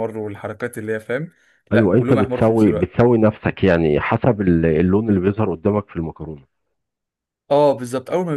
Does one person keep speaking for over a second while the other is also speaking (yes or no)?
yes